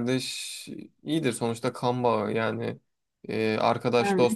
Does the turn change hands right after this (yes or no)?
no